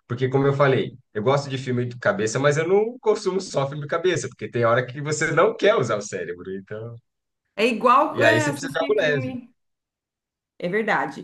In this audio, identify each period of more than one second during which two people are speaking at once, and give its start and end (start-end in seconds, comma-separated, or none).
8.1-9.3